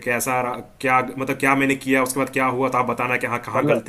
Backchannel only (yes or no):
no